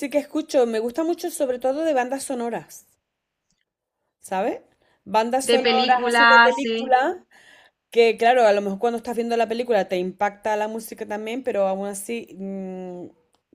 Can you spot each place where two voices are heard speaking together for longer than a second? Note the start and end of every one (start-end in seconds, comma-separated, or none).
5.4-7.0